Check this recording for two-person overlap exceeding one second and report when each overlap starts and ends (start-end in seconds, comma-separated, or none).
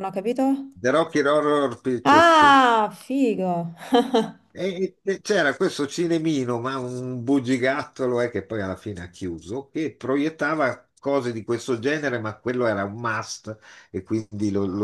none